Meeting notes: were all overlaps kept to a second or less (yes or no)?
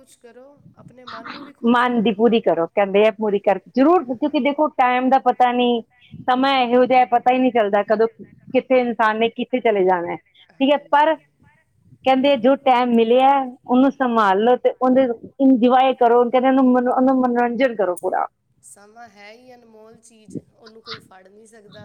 no